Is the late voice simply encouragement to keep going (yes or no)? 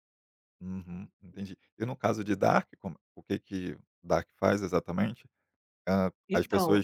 yes